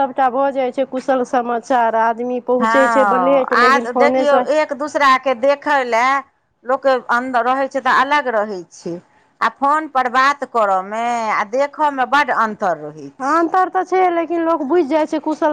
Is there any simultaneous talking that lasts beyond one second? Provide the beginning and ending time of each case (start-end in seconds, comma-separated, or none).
2.6-4.4